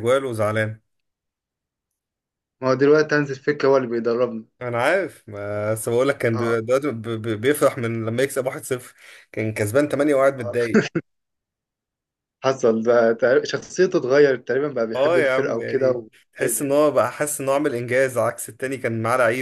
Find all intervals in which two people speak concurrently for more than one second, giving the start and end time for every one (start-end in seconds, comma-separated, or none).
14.9-16.7